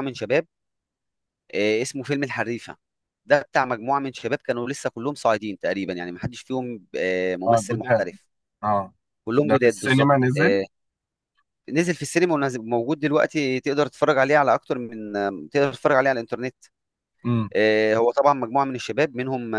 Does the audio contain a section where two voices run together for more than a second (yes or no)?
yes